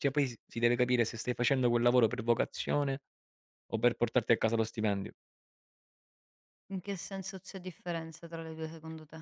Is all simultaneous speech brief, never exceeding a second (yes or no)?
yes